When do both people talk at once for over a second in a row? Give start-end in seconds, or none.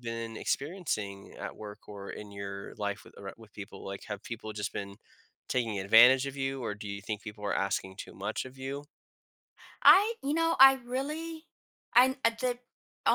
none